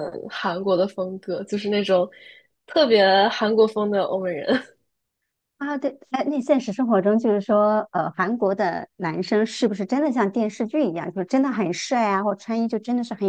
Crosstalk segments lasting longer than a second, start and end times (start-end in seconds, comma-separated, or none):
none